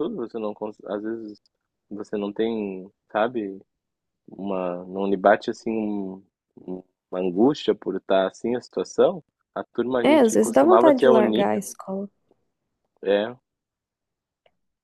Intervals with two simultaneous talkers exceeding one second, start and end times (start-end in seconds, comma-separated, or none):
10.0-11.5